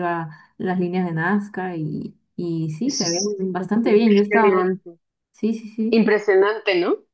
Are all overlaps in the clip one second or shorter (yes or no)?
no